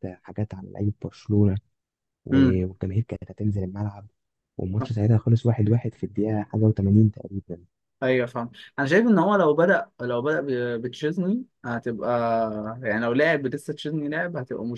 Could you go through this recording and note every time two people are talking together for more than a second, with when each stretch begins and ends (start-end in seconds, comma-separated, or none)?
none